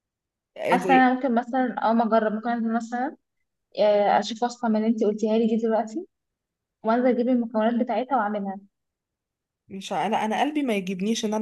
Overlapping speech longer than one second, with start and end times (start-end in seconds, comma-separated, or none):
none